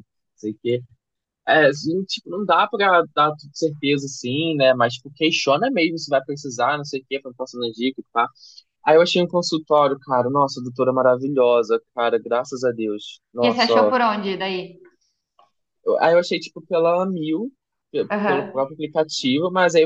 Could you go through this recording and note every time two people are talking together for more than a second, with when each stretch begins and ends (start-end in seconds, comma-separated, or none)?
none